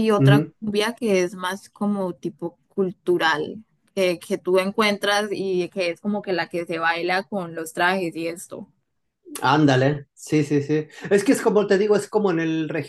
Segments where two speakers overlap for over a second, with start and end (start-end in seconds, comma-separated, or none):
none